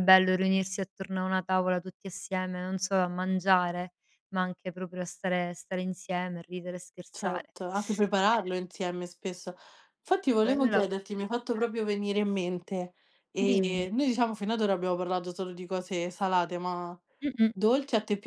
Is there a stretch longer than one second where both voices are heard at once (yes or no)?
yes